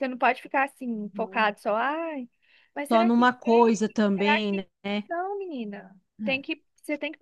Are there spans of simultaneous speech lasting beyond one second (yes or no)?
yes